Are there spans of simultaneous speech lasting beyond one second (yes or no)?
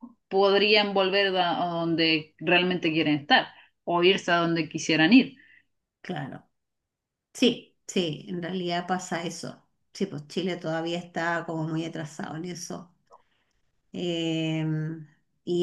no